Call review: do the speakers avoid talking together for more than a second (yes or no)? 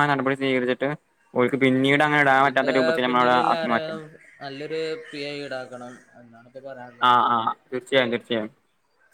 yes